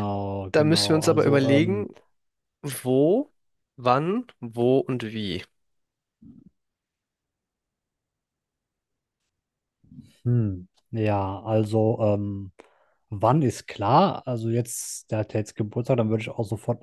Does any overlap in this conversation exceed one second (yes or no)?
yes